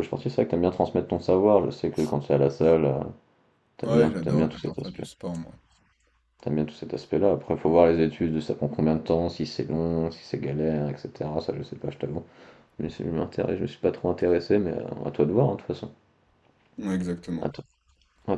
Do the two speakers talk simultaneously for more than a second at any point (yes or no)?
yes